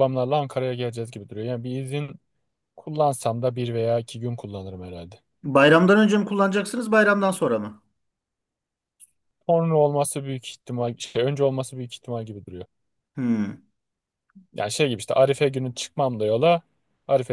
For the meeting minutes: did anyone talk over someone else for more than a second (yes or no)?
no